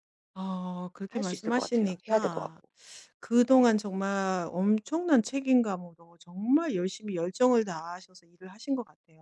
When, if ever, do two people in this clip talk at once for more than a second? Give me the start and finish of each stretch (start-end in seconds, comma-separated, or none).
1.1-2.6